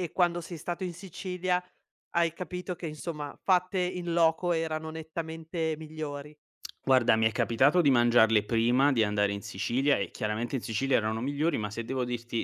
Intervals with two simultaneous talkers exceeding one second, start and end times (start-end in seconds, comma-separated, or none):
none